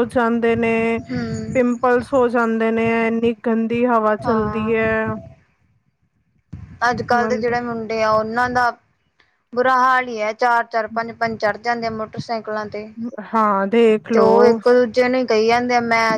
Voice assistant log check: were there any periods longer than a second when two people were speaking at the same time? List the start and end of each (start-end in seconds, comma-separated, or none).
none